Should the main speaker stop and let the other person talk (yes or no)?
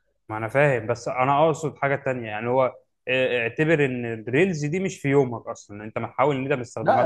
yes